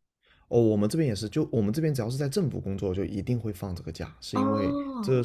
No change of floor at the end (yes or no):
yes